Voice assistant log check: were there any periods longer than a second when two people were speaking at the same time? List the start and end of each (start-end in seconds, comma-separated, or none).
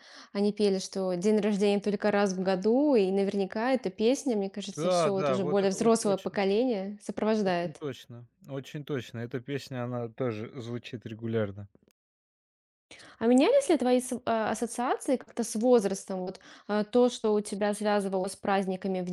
4.8-6.4